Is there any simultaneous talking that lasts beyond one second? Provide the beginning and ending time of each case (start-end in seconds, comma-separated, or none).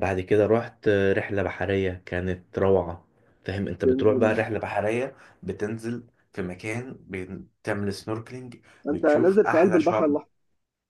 8.9-10.2